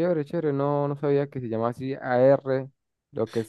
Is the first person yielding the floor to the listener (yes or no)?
yes